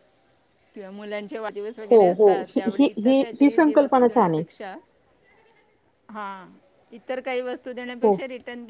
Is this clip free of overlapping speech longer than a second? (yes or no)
no